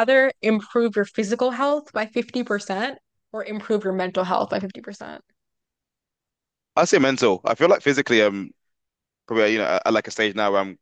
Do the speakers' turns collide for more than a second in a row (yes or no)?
no